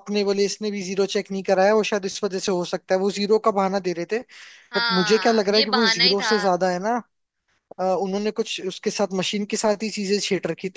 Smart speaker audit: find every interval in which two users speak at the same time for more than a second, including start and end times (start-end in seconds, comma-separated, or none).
4.8-6.3